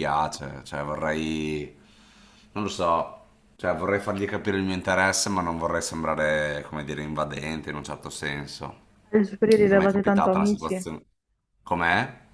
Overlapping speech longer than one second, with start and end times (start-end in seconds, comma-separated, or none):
9.7-10.9